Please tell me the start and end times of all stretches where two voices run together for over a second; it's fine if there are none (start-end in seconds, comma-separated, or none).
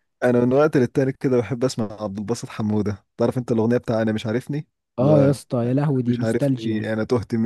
5.0-6.9